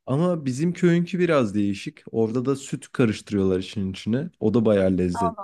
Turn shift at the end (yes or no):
yes